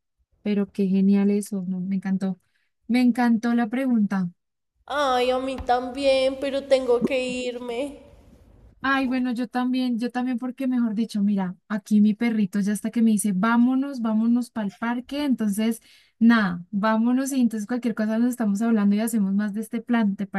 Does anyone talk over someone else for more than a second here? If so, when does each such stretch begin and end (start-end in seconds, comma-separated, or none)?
none